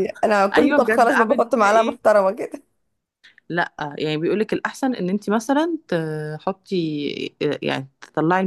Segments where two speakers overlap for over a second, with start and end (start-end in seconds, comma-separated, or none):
0.5-2.0